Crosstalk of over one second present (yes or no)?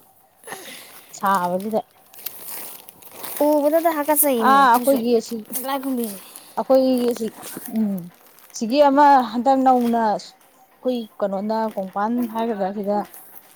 no